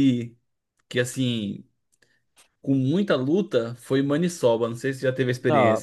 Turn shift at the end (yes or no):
yes